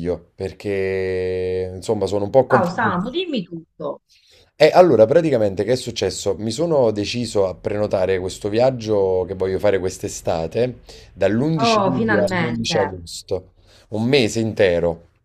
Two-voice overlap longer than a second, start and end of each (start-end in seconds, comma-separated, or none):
11.6-12.9